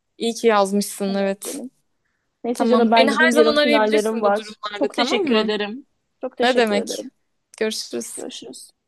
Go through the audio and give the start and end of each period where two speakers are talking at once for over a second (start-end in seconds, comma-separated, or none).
2.5-5.5